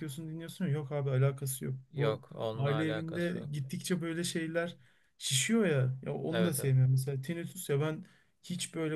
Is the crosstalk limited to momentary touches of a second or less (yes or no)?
no